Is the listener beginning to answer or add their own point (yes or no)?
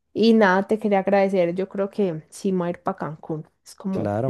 yes